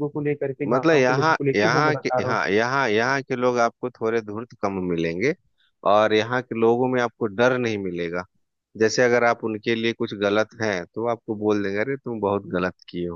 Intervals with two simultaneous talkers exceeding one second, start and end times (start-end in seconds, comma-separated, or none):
0.7-2.4